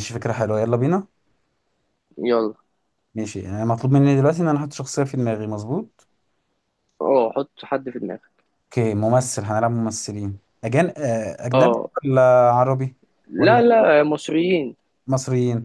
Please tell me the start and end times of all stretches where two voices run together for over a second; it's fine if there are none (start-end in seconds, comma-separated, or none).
none